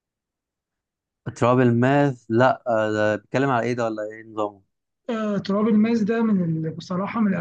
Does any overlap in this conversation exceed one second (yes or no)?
no